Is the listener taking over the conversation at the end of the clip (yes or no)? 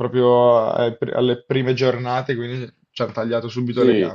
no